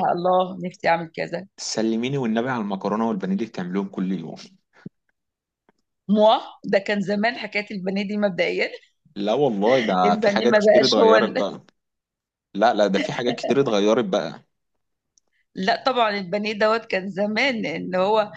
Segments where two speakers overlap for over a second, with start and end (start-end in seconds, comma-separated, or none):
10.1-11.5